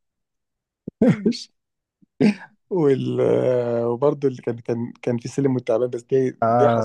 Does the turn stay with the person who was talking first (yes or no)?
no